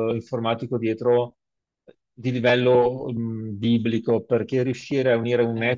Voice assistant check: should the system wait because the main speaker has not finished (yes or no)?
yes